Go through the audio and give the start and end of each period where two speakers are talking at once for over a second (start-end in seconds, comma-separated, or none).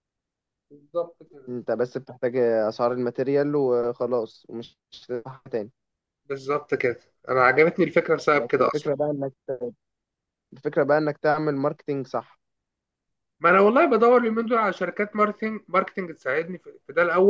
none